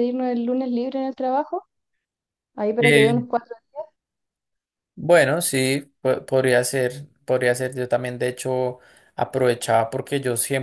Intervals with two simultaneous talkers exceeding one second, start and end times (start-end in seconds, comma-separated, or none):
none